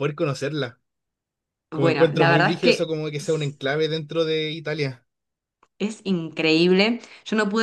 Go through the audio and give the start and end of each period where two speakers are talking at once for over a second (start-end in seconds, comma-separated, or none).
1.7-3.6